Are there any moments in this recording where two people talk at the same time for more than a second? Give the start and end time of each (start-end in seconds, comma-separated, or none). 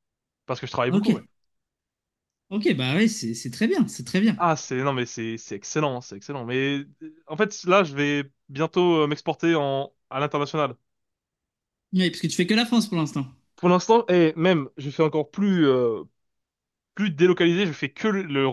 none